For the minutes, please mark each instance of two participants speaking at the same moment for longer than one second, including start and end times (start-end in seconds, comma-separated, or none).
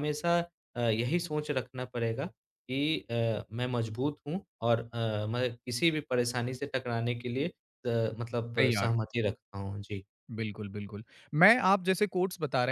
none